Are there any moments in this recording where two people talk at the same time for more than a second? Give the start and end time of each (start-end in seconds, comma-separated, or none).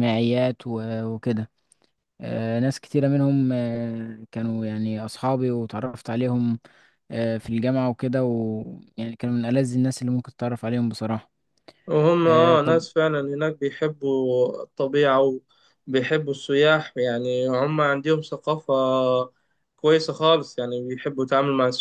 none